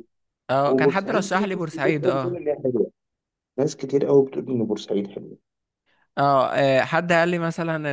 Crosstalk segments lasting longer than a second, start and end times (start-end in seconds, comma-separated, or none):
0.6-2.4